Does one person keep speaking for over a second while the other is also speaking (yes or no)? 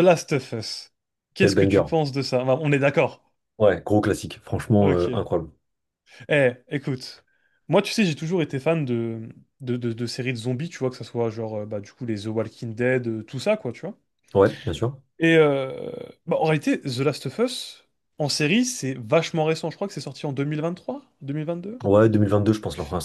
no